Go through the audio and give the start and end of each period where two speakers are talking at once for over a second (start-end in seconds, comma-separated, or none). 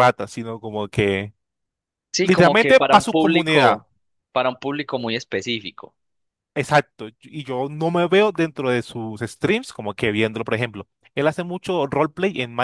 2.2-3.8